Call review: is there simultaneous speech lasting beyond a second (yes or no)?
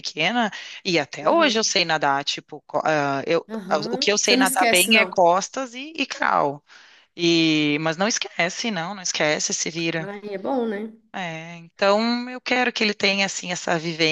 yes